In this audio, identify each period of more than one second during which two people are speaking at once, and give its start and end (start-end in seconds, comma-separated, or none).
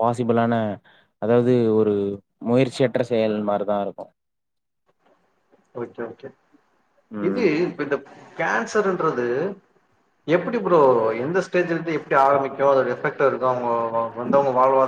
none